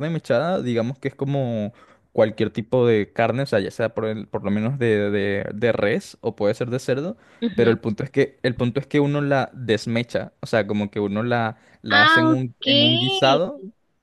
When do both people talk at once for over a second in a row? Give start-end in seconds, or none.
11.9-13.4